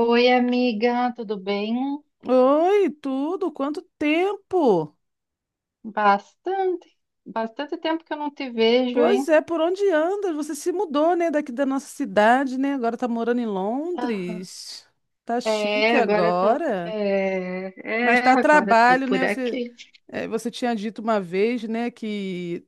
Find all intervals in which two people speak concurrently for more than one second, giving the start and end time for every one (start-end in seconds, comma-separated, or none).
15.4-16.9, 18.0-19.6